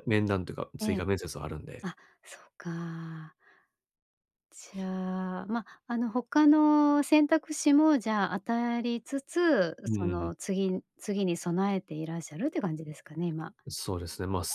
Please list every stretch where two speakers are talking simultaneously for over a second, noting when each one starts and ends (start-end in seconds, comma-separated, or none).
none